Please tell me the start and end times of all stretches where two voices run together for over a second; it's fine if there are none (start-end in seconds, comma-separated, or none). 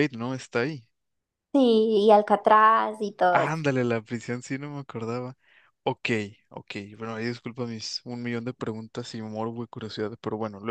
none